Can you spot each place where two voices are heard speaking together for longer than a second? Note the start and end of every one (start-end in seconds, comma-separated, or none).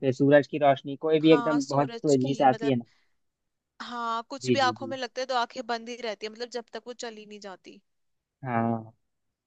1.3-2.8